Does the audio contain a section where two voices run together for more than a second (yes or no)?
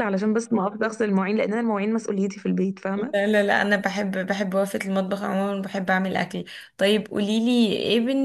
no